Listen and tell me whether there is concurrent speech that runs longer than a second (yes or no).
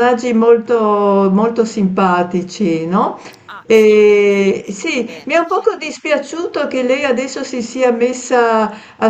yes